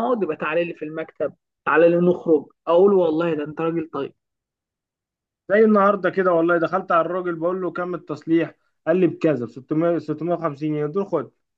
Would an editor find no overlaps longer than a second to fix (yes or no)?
yes